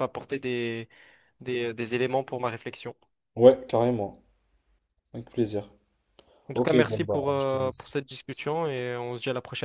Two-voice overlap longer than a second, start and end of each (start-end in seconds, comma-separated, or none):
6.5-7.9